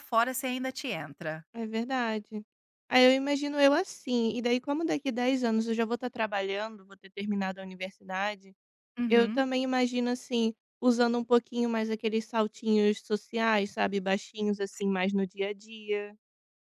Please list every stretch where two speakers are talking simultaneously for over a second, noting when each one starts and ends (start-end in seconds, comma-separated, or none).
none